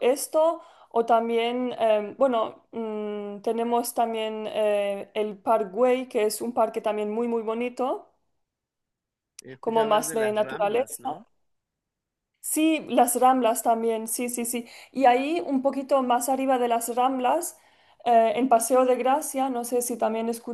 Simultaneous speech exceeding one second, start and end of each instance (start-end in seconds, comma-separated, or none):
9.6-11.2